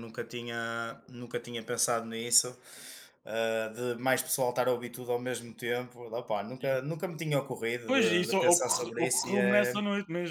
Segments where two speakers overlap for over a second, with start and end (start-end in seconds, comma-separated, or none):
7.9-9.8